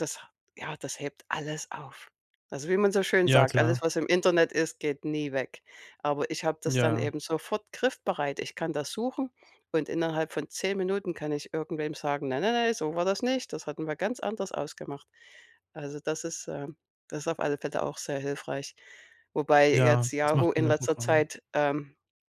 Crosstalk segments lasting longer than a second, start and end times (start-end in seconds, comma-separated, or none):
19.7-21.2